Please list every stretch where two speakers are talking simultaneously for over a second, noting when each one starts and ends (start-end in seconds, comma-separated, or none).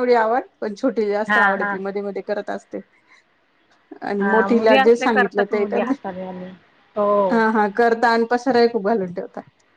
4.2-5.9